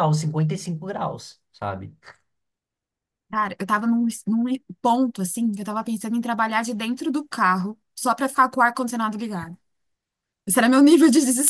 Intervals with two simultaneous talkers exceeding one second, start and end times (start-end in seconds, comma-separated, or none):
none